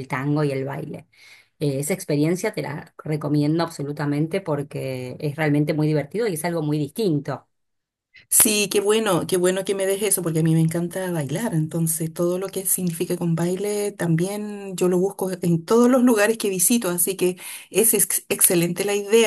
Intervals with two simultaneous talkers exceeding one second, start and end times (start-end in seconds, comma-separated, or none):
none